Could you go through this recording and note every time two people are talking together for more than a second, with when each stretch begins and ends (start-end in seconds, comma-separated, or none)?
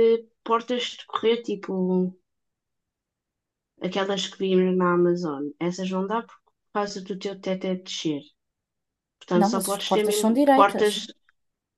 9.3-11.0